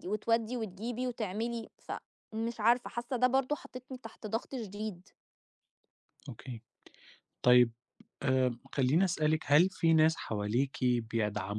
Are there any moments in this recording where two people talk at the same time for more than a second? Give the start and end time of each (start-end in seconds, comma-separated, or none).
none